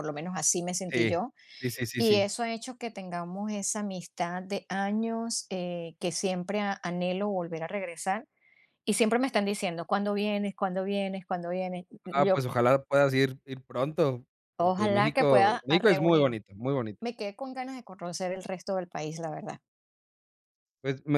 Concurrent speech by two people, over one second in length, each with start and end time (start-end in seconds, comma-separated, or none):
14.6-16.4